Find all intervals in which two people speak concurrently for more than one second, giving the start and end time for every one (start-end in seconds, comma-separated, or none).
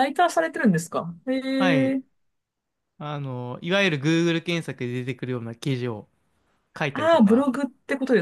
none